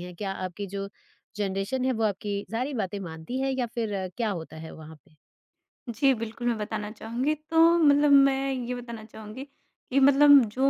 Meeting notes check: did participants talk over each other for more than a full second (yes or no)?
no